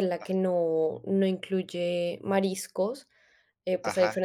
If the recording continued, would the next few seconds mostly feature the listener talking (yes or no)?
no